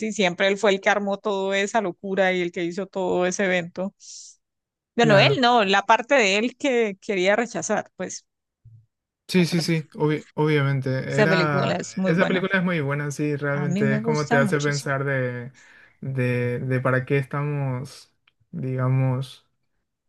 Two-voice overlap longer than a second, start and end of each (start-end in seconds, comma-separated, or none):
11.1-12.4, 13.5-14.9